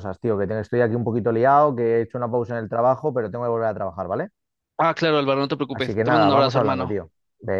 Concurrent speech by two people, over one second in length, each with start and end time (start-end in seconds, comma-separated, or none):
5.7-7.0